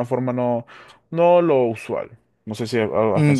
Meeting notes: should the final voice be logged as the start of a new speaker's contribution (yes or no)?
yes